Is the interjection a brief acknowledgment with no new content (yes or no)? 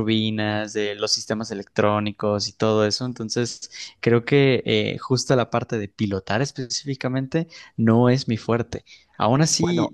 yes